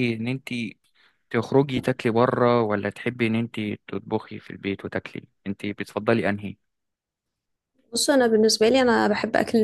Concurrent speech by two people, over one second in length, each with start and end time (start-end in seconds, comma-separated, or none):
none